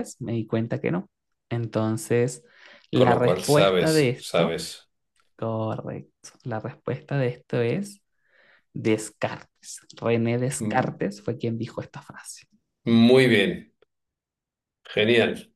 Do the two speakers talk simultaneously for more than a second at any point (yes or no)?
yes